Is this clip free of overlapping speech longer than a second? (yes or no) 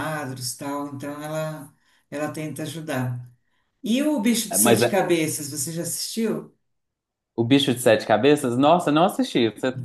yes